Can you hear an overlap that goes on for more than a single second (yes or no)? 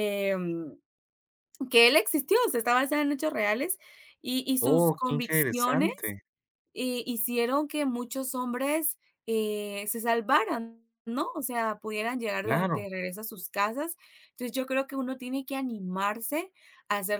yes